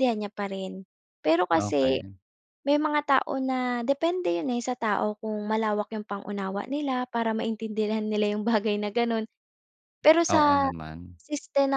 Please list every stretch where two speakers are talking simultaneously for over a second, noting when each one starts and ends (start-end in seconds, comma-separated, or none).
none